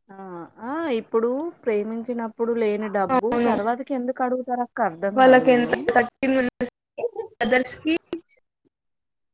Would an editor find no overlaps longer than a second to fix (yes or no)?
yes